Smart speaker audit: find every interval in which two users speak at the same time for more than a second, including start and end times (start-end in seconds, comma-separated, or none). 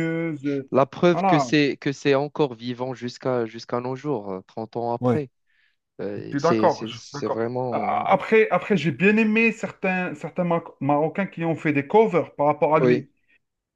6.2-8.1